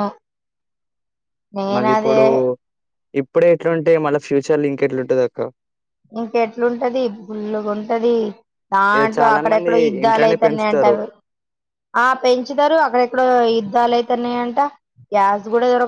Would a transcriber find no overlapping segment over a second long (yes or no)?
no